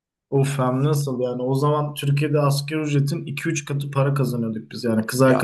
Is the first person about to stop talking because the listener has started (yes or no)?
no